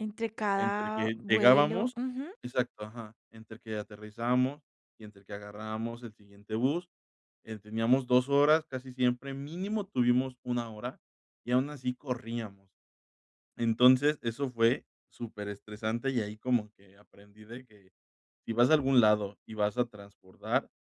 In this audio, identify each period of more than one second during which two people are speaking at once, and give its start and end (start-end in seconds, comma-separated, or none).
0.6-2.0